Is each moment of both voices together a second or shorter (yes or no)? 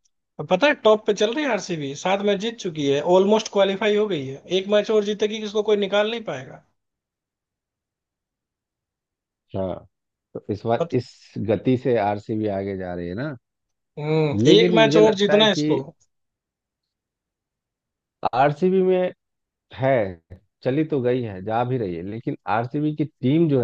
no